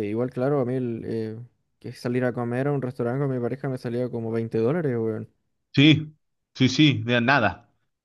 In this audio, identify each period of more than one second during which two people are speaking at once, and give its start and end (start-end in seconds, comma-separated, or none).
none